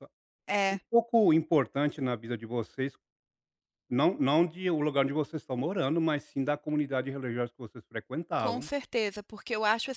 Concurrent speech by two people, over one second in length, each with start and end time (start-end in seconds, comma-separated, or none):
none